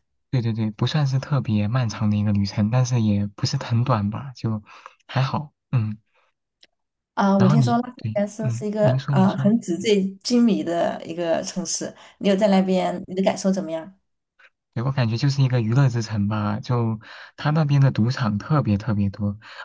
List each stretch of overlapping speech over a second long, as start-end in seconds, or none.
7.4-9.5